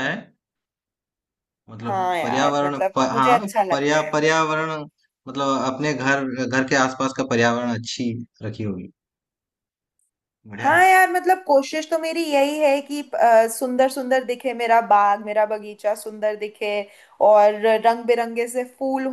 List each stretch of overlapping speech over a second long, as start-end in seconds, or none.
1.8-4.2